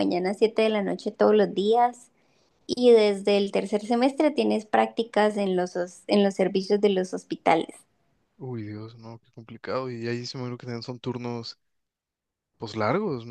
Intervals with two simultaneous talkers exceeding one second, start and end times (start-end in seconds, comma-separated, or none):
none